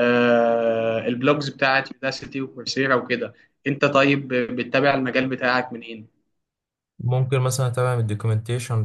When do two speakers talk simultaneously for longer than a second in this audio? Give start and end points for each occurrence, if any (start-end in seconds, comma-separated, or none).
none